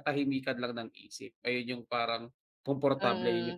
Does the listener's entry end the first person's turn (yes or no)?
yes